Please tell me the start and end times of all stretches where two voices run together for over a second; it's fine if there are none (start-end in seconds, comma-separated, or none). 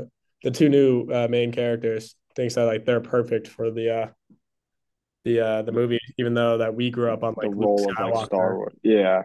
7.4-8.6